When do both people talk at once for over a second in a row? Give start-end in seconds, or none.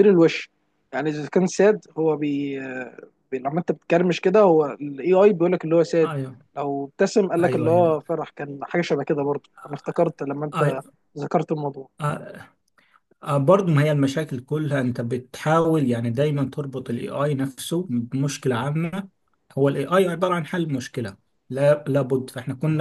none